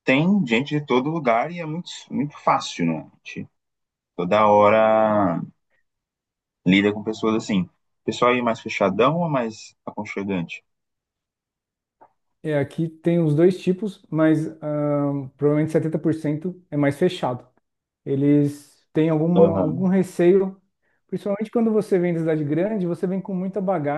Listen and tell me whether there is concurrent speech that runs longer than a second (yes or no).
no